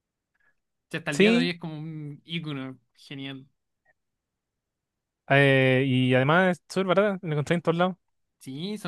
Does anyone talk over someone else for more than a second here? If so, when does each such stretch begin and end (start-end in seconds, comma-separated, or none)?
none